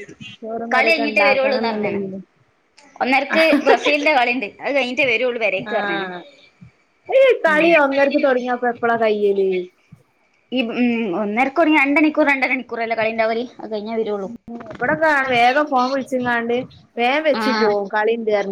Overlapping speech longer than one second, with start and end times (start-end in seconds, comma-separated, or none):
0.7-2.0